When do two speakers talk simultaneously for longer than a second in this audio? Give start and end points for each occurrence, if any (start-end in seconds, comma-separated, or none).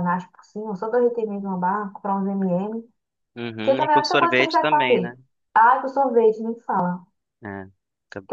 3.6-5.1